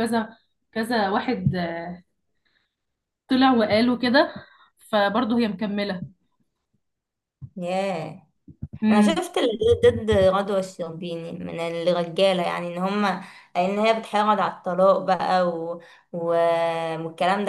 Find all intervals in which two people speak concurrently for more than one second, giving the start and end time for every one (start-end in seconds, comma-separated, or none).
none